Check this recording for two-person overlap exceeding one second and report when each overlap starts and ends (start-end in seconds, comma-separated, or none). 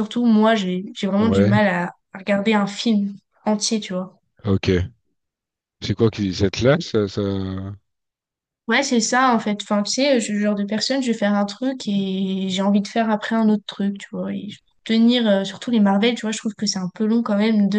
none